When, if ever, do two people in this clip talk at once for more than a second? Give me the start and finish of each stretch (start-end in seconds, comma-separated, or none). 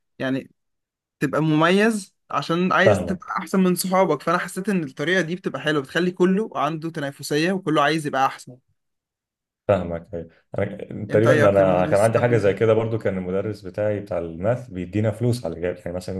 11.1-12.5